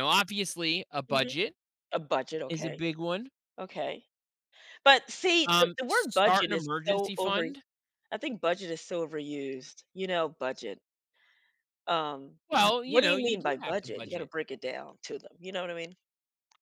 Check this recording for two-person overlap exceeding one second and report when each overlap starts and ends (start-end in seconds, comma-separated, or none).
5.5-7.5, 12.8-14.3